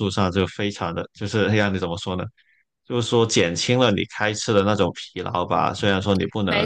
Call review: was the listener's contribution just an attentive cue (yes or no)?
yes